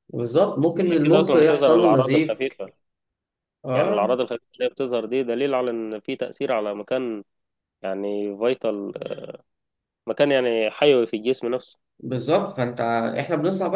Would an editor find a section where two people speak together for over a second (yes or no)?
yes